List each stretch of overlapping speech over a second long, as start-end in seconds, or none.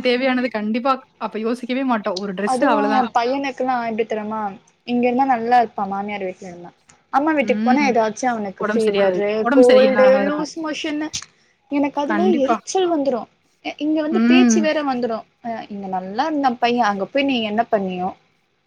8.6-10.5